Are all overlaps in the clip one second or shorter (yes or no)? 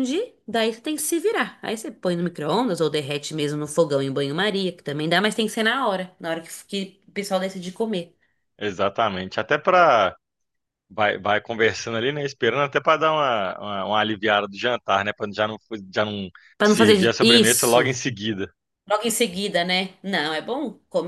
no